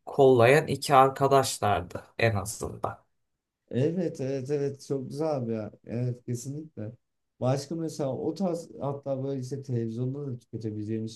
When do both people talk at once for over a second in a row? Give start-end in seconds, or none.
none